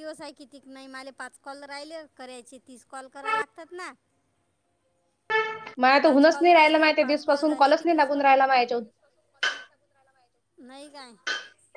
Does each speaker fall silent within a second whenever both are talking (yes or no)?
no